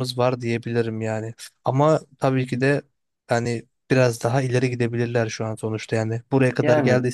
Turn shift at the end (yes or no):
no